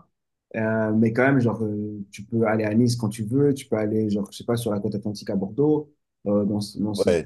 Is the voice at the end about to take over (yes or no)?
yes